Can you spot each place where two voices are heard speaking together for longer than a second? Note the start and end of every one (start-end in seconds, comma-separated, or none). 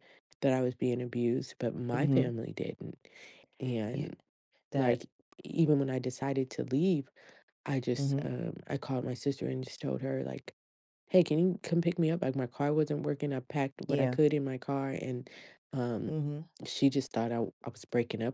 none